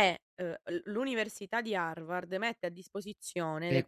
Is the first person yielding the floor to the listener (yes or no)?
yes